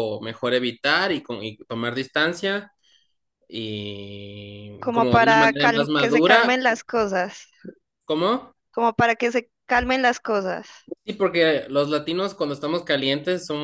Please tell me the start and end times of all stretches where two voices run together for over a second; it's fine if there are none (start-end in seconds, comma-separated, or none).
4.8-6.6